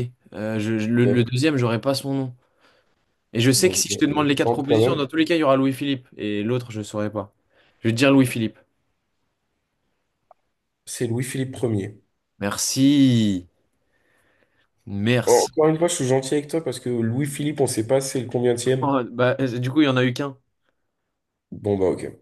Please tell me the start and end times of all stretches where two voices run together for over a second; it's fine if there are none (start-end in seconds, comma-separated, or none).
3.6-5.1